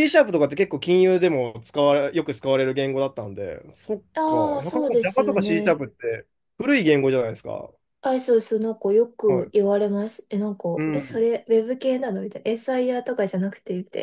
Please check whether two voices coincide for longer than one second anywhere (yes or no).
yes